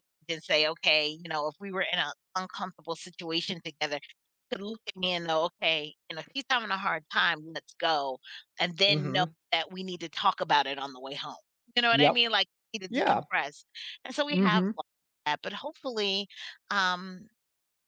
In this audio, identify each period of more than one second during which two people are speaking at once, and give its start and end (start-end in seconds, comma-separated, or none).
none